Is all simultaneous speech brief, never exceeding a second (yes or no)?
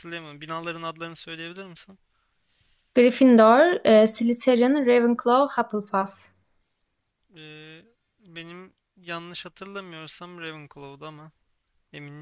yes